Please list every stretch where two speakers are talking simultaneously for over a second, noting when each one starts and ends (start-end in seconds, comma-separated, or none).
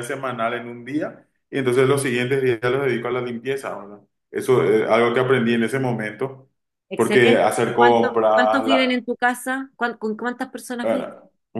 7.0-8.6